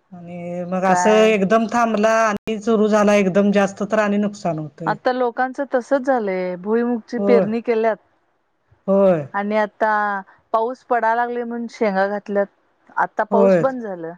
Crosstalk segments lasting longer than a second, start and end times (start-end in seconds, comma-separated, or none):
none